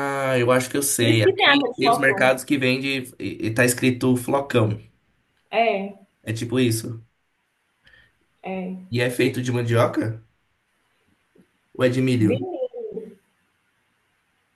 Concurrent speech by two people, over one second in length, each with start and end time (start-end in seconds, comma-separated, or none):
1.0-2.4